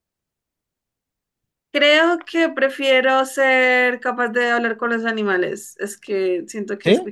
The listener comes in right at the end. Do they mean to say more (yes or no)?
no